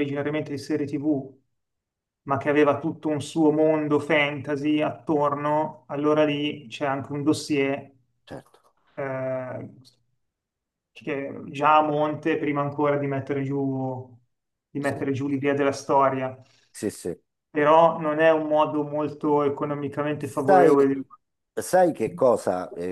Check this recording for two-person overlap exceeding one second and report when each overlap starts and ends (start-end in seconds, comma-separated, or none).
none